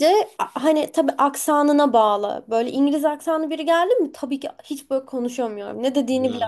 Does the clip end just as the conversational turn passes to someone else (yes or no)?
yes